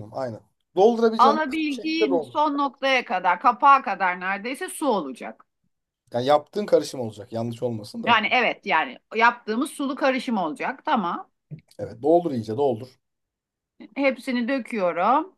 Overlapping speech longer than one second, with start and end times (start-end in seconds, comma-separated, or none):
1.2-2.5